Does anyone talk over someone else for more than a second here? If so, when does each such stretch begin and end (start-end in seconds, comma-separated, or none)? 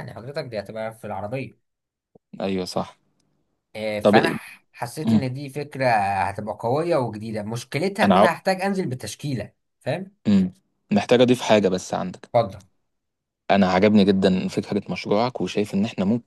none